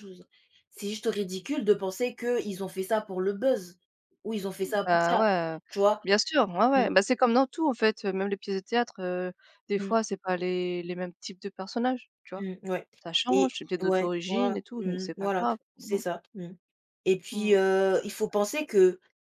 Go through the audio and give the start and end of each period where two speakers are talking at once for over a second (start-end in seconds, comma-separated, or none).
13.3-16.2